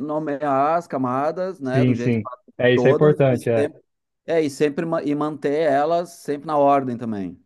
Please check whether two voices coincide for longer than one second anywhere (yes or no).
yes